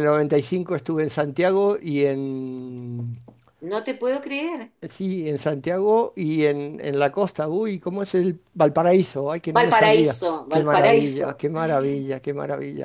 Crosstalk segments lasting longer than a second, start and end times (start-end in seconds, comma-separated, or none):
9.6-11.3